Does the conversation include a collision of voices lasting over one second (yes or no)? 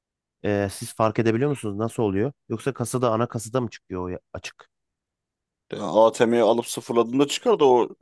no